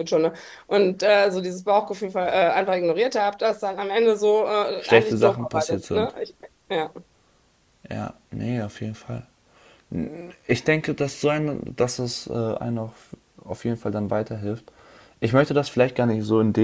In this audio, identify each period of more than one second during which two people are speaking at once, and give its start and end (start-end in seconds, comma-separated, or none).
4.8-6.1